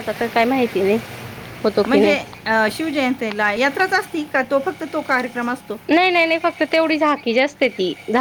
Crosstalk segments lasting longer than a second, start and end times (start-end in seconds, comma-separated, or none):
none